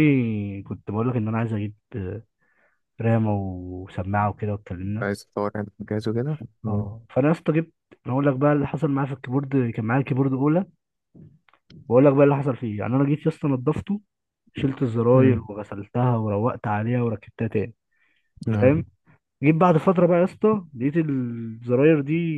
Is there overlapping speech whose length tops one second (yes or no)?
no